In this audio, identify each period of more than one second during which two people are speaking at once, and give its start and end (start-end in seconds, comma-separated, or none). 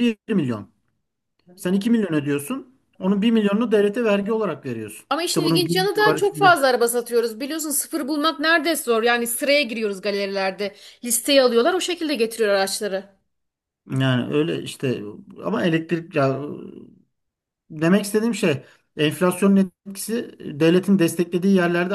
5.1-6.6